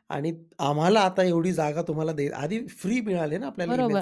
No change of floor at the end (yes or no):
no